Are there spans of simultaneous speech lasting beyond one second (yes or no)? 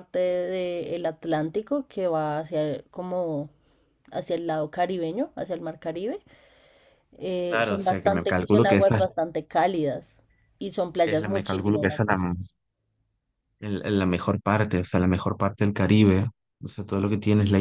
yes